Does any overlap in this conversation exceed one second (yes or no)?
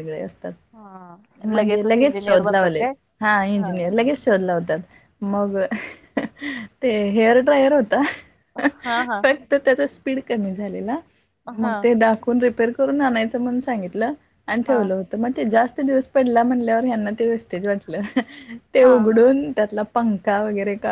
yes